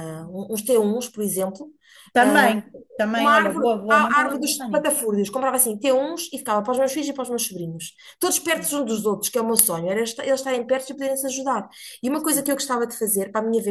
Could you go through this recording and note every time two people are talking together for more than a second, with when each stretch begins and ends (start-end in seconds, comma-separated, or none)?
3.1-5.0